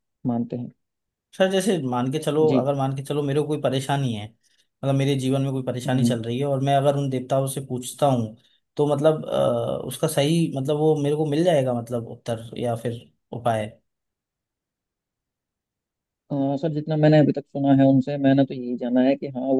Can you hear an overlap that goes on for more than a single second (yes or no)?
no